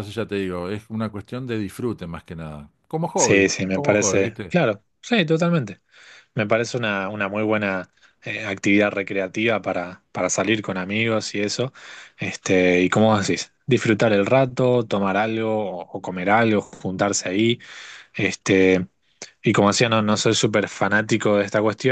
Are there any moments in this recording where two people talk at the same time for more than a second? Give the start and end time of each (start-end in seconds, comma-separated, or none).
3.1-4.5